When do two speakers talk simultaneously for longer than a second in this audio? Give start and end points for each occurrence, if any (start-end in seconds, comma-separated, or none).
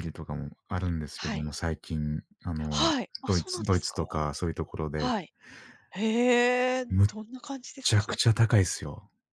2.7-4.2